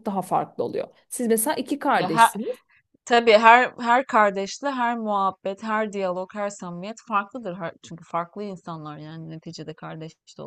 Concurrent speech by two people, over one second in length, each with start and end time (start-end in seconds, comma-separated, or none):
none